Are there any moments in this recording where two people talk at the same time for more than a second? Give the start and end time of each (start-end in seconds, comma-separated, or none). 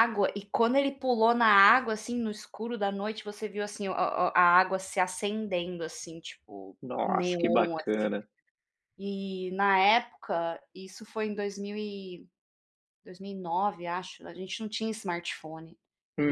6.8-8.1